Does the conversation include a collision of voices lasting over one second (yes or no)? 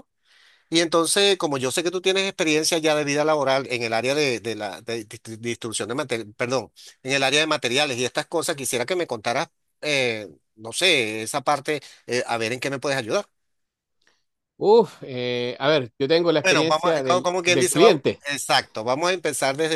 yes